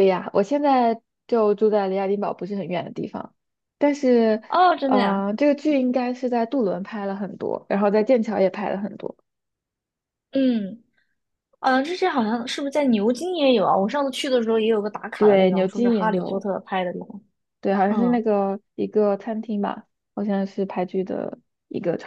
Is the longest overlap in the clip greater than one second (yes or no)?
yes